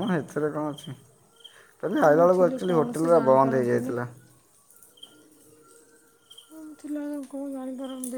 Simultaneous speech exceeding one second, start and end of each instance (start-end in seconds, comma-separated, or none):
2.0-3.9